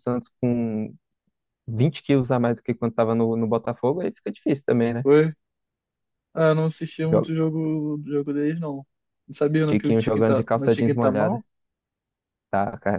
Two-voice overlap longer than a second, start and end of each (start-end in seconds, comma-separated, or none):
9.7-11.4